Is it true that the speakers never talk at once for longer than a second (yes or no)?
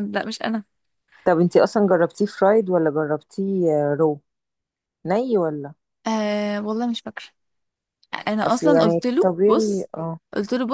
no